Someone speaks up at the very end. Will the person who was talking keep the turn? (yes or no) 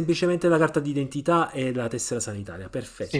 no